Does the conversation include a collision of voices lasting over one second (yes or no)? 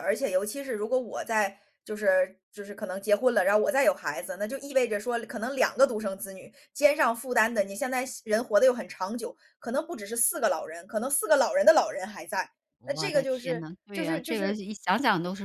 yes